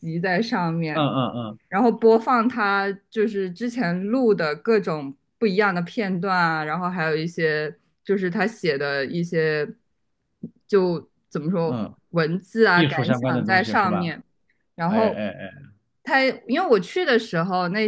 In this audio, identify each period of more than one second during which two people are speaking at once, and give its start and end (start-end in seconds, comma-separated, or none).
12.7-14.1